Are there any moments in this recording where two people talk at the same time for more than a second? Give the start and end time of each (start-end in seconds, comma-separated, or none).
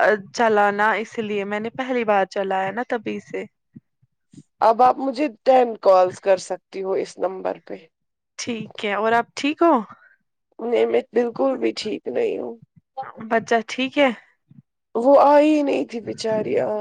none